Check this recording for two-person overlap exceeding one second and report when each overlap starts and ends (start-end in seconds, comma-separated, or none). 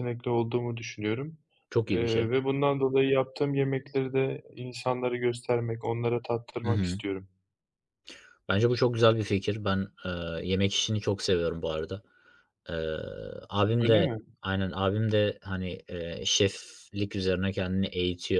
none